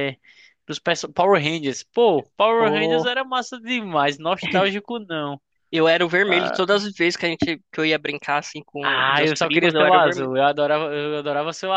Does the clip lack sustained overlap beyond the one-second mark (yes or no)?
no